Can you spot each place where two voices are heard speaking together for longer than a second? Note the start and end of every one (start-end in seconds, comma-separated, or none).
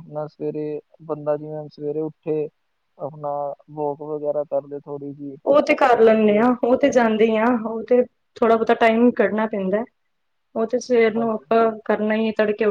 none